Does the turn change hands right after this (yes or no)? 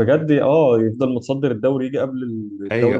no